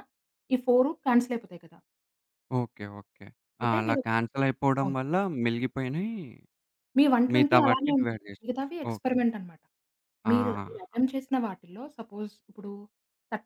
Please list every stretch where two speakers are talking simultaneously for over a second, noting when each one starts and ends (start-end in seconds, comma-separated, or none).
7.3-9.1